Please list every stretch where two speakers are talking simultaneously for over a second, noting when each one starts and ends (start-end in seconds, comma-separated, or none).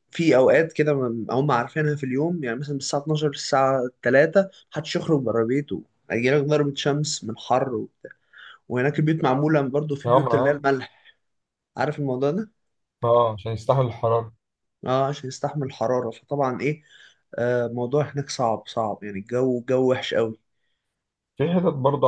none